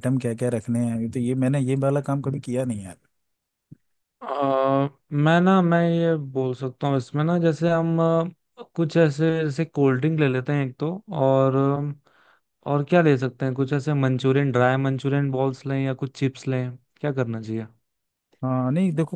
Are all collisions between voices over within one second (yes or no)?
yes